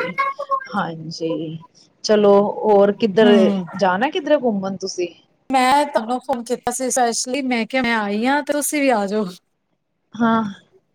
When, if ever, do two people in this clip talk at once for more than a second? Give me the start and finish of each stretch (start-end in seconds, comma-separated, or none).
none